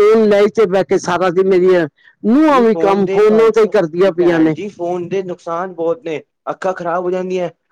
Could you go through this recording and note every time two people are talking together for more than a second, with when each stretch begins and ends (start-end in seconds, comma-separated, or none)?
2.5-4.5